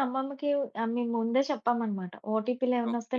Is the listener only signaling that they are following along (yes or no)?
yes